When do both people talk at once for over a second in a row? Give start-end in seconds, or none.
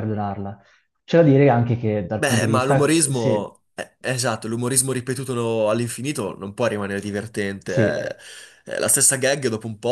2.1-3.5